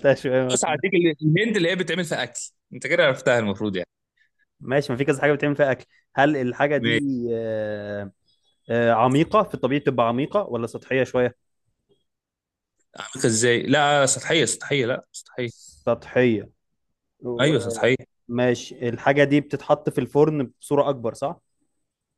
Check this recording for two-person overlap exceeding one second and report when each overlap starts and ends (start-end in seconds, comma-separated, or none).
none